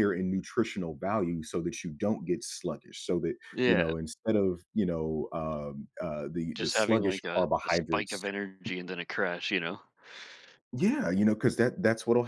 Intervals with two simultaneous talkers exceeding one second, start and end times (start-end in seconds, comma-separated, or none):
6.5-8.3